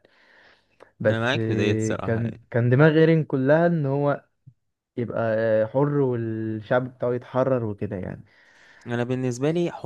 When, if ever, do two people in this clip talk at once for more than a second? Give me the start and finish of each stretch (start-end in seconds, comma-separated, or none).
1.1-2.4